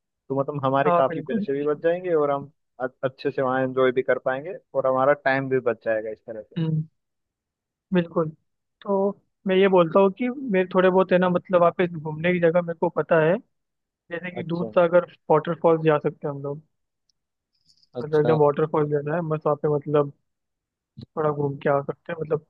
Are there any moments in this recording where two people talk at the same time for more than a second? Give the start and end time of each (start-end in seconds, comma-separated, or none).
none